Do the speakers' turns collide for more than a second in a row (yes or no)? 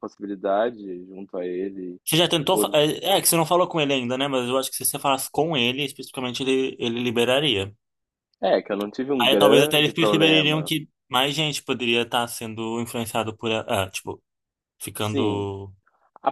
yes